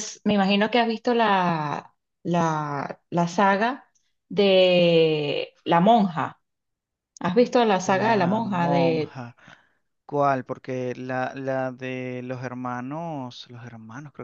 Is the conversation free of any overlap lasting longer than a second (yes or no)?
no